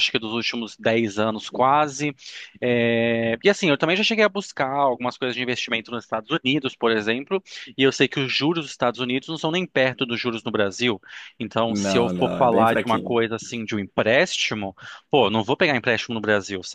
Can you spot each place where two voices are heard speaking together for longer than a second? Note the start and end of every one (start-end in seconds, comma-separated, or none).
11.7-13.2